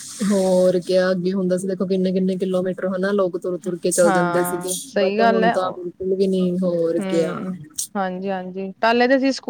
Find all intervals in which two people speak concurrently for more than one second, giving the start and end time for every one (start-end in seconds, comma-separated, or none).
4.0-5.5